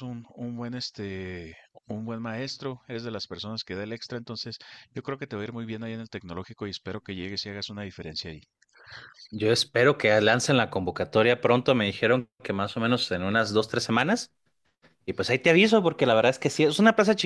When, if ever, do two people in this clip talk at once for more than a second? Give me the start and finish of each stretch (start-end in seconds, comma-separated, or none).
none